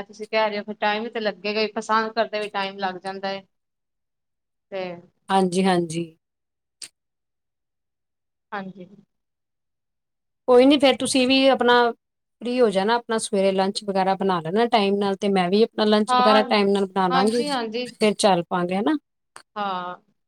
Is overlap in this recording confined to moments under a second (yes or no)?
yes